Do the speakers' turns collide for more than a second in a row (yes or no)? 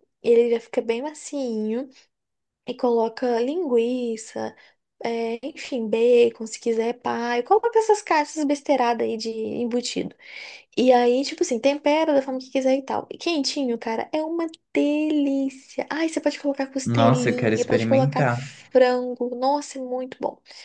yes